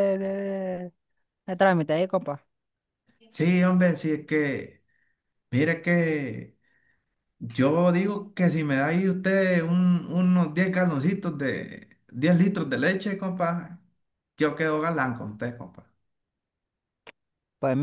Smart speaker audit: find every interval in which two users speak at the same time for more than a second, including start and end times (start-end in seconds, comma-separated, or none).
none